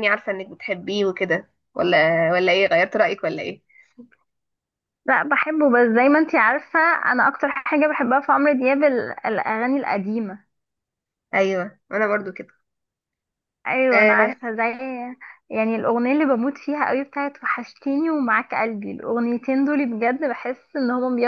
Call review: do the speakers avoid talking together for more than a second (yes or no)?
yes